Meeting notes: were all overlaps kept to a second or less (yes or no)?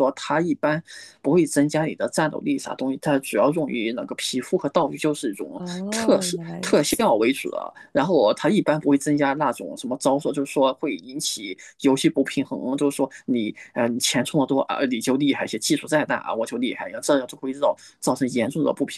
no